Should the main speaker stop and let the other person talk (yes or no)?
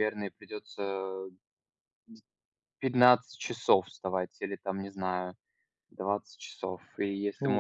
yes